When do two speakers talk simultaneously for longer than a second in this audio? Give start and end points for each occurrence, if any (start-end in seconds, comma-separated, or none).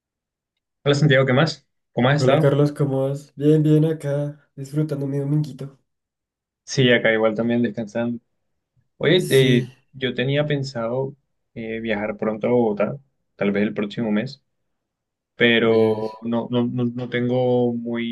none